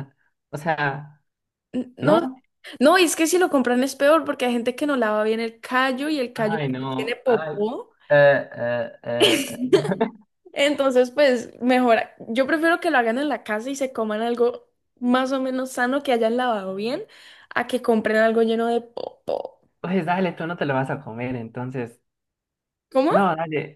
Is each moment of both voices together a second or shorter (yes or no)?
no